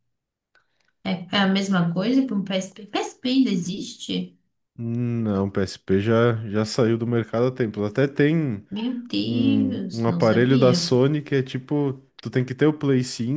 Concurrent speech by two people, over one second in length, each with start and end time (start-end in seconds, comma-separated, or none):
9.2-10.9